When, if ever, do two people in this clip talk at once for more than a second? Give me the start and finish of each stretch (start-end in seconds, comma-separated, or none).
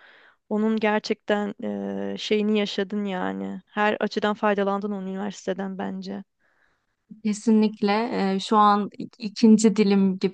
none